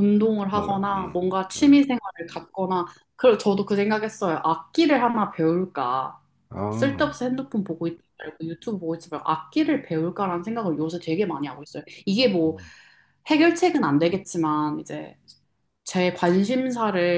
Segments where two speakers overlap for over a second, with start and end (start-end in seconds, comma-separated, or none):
0.5-1.8